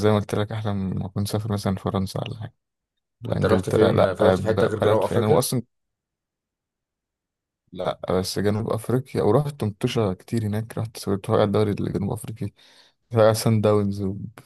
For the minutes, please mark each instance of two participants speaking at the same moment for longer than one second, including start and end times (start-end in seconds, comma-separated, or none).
3.3-5.4